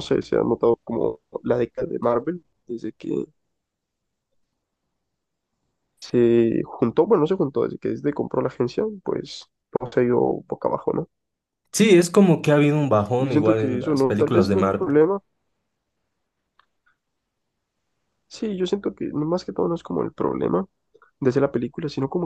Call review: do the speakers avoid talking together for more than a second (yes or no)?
no